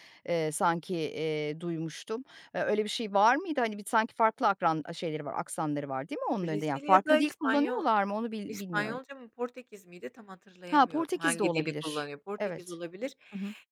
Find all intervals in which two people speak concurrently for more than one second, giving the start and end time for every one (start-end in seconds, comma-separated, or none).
6.4-7.8, 10.7-12.8